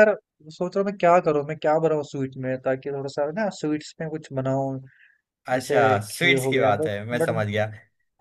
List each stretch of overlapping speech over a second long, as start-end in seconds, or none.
5.5-7.4